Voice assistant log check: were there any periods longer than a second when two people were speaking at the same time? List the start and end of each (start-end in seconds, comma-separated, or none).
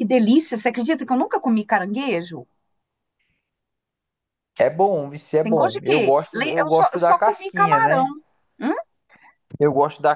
5.4-8.1